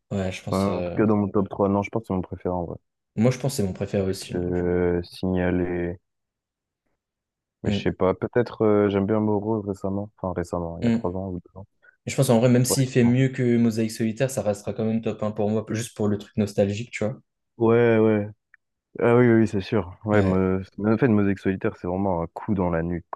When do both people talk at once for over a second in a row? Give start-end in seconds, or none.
none